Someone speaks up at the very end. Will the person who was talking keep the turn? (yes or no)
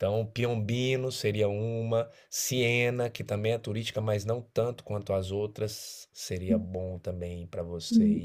no